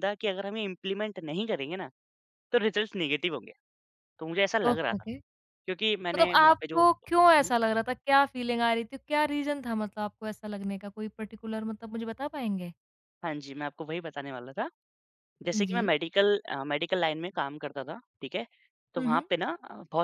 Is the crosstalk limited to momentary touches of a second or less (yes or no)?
no